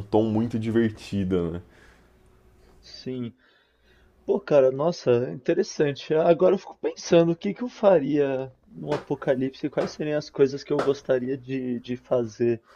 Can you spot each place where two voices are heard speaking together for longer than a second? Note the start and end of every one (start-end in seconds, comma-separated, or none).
none